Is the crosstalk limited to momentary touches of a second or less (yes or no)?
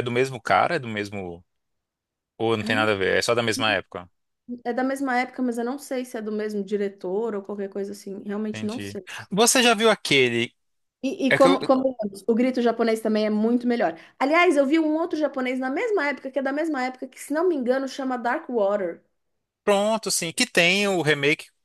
yes